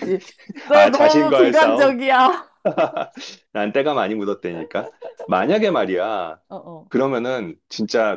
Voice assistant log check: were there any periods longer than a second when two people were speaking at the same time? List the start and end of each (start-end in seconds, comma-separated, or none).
0.7-1.9